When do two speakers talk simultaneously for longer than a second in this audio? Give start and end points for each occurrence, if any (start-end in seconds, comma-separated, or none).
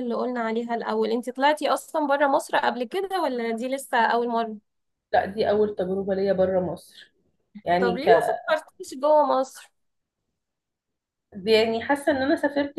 none